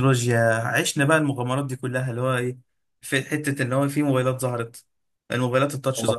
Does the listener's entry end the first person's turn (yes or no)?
no